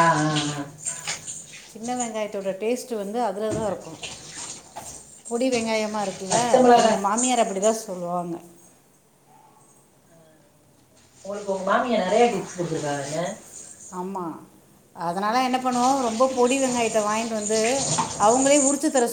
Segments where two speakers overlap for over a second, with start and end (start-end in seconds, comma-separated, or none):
none